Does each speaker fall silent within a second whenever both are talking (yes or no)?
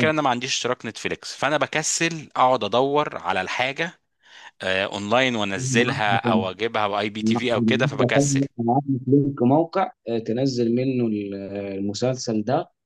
yes